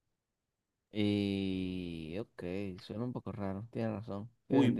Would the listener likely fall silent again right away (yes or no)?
no